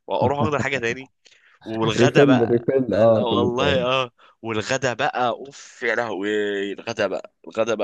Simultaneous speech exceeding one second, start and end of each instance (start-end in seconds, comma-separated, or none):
2.0-4.0